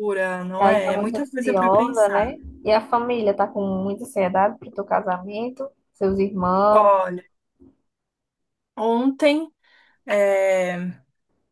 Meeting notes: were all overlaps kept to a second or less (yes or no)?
no